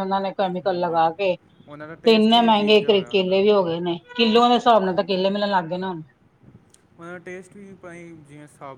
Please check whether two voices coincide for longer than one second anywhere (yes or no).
yes